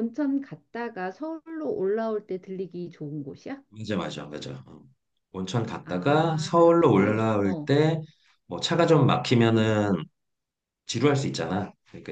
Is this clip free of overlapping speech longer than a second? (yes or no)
no